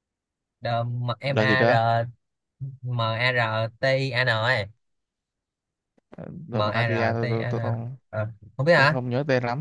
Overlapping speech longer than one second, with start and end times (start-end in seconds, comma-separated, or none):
6.5-8.0